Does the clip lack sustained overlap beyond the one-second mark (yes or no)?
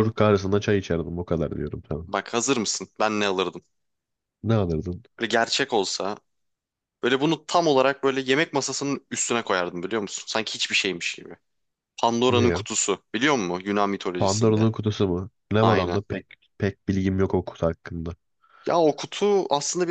yes